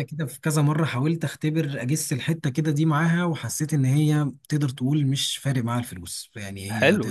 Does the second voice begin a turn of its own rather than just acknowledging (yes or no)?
yes